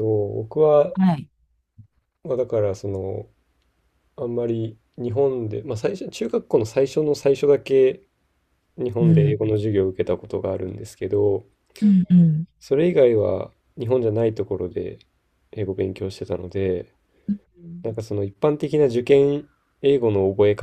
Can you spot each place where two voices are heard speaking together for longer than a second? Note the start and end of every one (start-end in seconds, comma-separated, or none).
none